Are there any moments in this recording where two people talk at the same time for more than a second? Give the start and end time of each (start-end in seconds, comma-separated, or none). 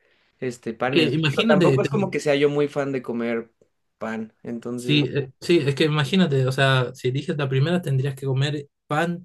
0.9-2.1